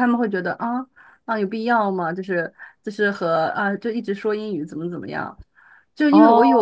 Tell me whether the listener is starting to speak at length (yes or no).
no